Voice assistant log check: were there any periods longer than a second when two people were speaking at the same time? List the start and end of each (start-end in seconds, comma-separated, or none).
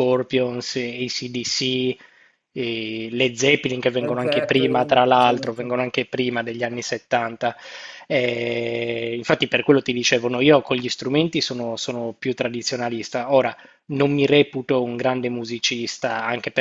4.0-5.7